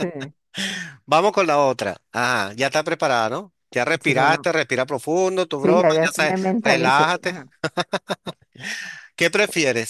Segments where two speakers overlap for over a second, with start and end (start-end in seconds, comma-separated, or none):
5.6-7.3